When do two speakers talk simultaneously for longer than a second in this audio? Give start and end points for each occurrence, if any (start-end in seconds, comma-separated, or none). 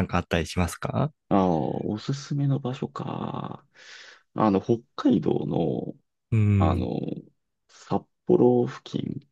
none